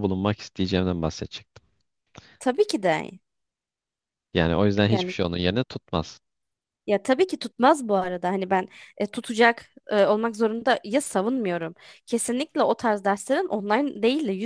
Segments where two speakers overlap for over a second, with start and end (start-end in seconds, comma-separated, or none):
none